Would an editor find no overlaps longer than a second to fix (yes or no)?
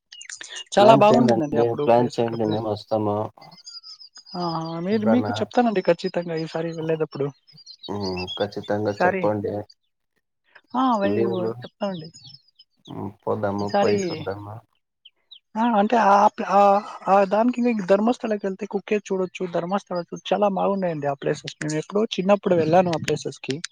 no